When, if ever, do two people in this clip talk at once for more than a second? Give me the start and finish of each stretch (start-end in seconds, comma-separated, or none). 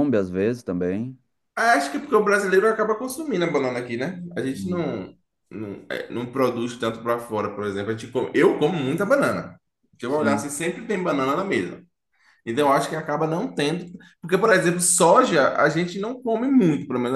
none